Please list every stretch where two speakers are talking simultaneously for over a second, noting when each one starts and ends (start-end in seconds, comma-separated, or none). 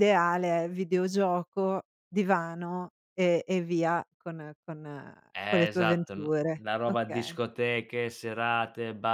5.3-7.3